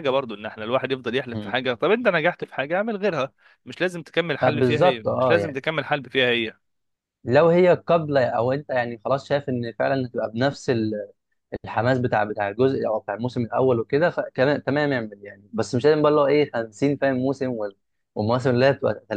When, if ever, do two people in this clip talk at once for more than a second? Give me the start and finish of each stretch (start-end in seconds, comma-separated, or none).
4.4-5.6